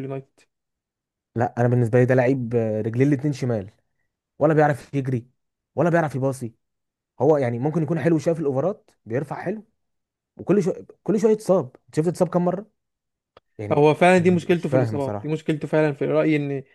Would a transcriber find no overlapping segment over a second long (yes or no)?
no